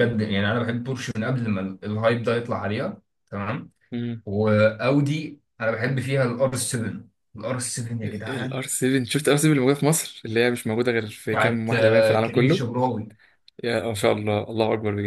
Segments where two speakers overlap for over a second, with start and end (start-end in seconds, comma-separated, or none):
11.3-12.6